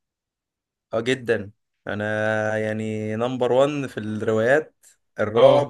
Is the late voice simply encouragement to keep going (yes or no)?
yes